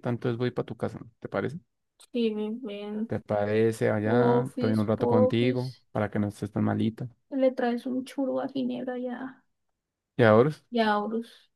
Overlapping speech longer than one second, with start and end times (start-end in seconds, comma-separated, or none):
4.0-5.6